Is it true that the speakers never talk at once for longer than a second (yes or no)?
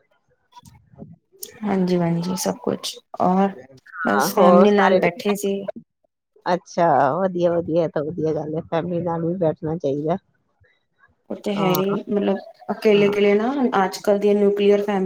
no